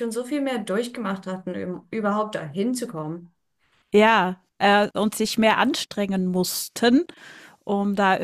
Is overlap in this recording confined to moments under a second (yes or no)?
yes